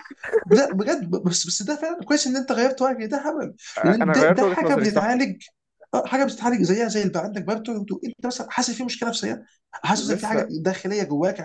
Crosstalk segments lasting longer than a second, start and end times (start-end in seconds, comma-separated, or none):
3.8-5.1